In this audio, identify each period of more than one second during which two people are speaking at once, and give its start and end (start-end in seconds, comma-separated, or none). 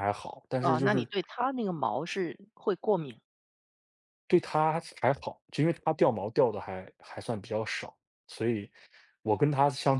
none